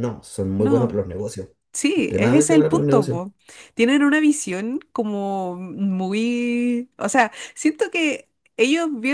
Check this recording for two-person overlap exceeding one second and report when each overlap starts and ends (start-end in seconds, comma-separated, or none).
1.9-3.2